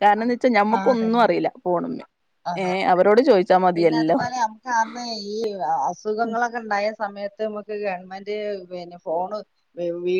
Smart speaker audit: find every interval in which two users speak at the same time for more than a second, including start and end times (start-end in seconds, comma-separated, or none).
none